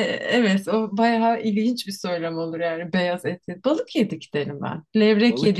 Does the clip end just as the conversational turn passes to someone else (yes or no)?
no